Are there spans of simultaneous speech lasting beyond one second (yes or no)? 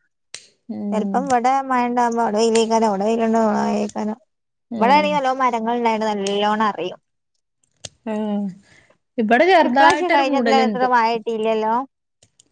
yes